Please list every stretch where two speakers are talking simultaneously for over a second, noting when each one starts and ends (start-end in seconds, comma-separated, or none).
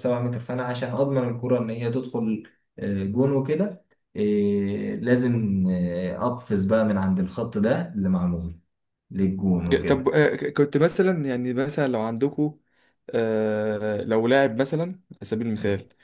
none